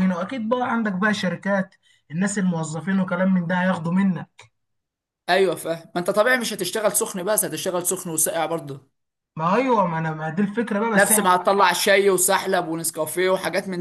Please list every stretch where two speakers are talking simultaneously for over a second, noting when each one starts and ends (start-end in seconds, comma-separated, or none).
none